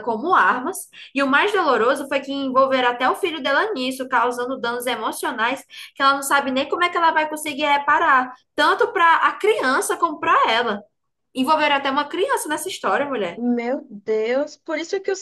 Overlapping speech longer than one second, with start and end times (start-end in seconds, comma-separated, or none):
none